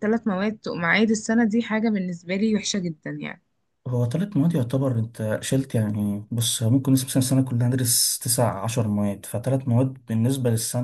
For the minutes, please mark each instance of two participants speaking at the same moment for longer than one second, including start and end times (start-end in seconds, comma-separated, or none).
none